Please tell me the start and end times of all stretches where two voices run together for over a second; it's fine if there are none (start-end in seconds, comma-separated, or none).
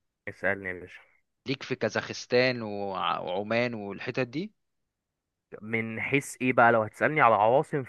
none